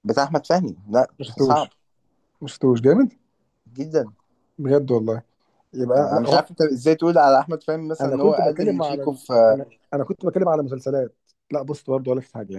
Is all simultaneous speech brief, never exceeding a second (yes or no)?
no